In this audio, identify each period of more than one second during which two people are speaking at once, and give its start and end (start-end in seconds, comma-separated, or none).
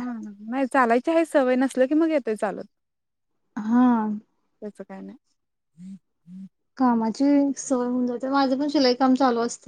none